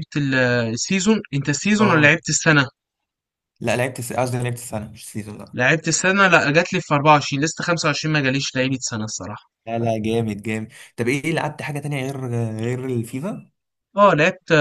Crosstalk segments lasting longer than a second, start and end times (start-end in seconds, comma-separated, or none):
none